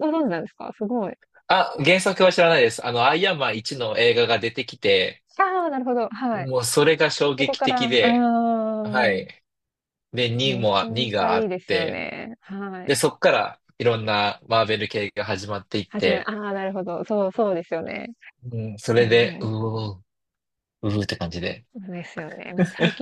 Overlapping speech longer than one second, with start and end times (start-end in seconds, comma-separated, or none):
10.4-12.0